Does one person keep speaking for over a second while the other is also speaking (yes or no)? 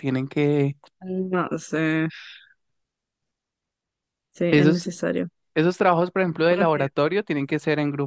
no